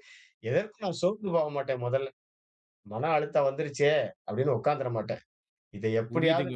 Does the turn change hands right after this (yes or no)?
yes